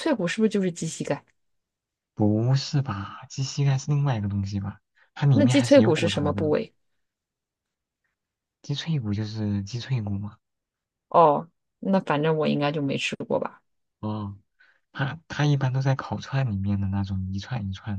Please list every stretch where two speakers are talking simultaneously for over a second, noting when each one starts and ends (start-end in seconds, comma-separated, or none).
5.3-6.5